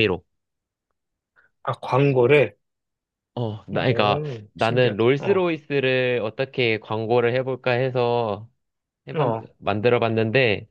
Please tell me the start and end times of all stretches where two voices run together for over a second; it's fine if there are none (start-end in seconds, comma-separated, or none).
3.7-5.5